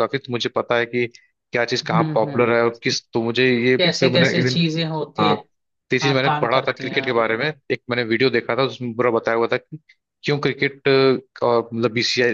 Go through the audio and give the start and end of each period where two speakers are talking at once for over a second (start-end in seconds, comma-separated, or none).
6.0-7.4